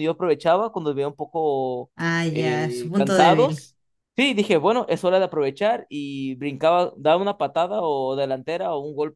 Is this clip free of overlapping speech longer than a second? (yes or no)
no